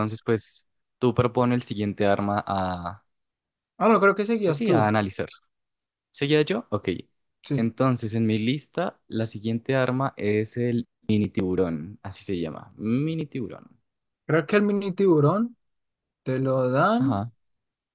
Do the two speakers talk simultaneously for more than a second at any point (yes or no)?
no